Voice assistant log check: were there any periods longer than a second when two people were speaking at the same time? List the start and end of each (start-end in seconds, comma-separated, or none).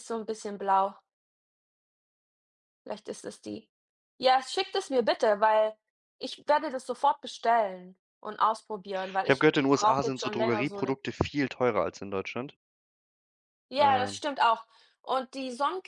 9.2-11.0